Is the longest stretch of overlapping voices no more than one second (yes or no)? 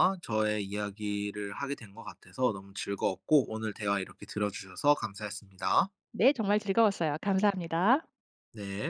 yes